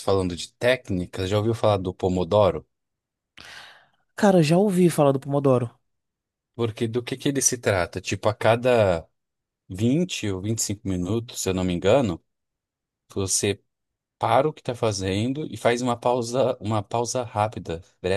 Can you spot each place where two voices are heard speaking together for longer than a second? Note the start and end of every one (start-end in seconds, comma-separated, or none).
none